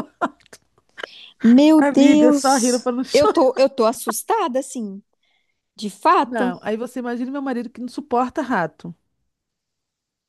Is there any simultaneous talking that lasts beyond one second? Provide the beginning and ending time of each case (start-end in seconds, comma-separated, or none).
1.8-3.4